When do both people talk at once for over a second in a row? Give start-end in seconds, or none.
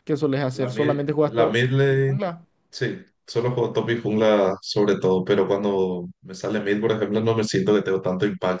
0.5-2.2